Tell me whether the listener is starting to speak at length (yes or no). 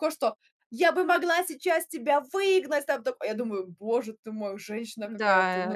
yes